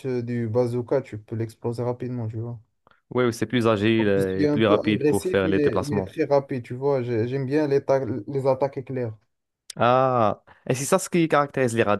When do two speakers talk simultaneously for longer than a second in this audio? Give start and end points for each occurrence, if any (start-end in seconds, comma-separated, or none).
4.2-6.1